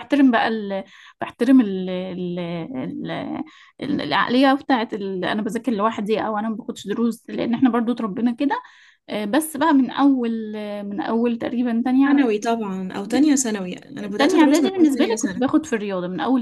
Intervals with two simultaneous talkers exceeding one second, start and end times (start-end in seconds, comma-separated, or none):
14.2-15.5